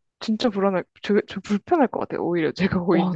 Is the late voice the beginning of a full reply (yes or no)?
yes